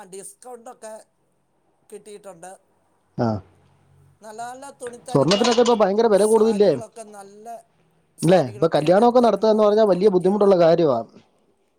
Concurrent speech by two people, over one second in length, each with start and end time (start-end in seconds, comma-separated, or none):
8.3-10.5